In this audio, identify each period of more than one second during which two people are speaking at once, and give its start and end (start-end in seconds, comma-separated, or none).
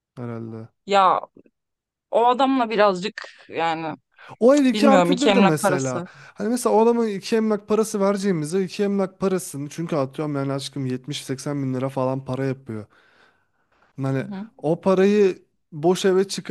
4.5-6.1